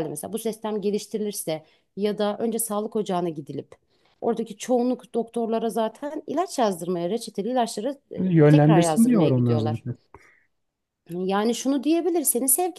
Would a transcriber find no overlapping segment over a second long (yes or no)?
no